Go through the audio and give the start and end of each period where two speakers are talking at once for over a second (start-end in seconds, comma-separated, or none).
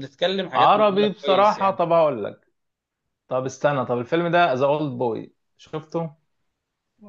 0.6-1.8